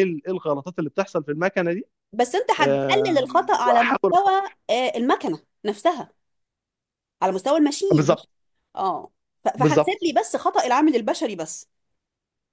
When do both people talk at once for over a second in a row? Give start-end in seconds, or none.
2.6-4.3